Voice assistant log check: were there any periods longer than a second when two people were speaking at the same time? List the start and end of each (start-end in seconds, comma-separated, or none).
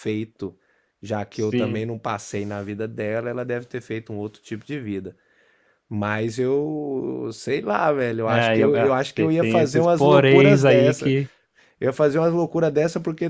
8.2-11.1